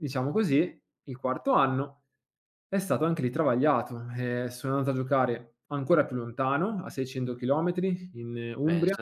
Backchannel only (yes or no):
no